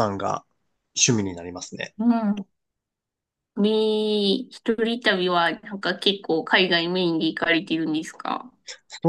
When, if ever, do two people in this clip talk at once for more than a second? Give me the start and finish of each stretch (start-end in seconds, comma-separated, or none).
none